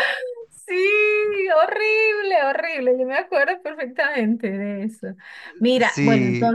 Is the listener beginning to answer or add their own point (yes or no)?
no